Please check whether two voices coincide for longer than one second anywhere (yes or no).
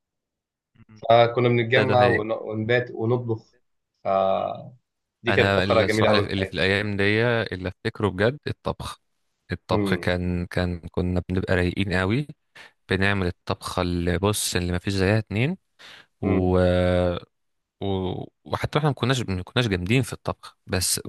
yes